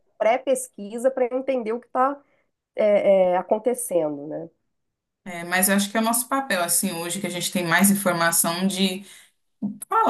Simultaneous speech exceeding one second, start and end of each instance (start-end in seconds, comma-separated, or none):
none